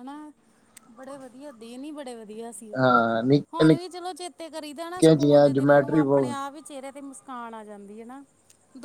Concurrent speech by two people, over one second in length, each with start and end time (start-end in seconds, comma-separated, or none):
5.0-6.4